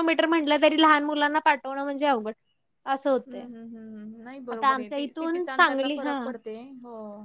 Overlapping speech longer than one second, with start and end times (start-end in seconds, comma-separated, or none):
4.5-6.2